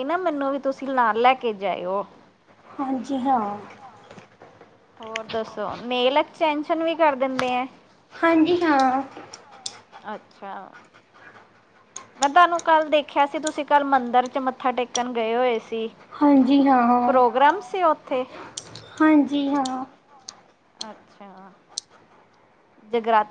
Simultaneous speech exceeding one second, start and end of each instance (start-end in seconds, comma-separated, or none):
none